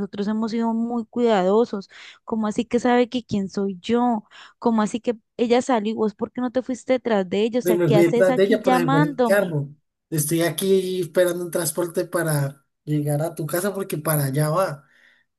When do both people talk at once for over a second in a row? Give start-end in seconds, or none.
7.6-9.6